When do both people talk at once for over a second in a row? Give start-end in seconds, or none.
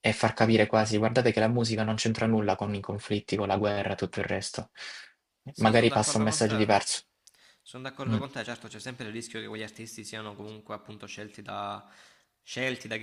5.6-6.8